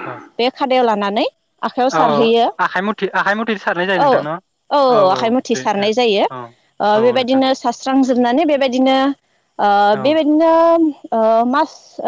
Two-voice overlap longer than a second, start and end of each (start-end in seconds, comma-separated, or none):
none